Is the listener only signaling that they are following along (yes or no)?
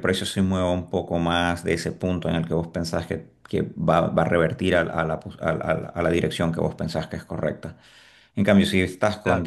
yes